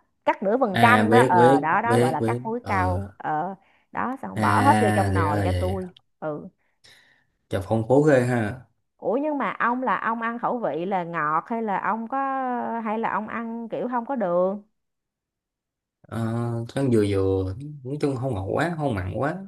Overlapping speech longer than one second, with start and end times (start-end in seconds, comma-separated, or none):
0.7-3.0, 4.3-5.8